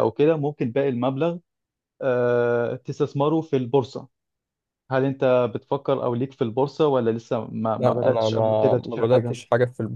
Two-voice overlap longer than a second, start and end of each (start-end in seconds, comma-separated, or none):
7.8-9.3